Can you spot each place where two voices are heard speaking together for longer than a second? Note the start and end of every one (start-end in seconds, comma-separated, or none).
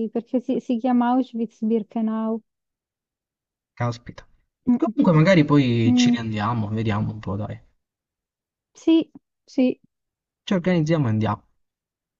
none